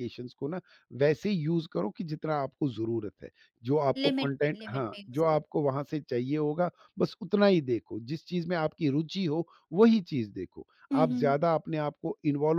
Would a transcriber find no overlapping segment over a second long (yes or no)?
no